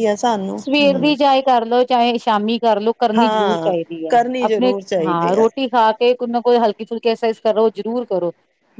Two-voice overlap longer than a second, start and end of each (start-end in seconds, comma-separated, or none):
3.2-5.5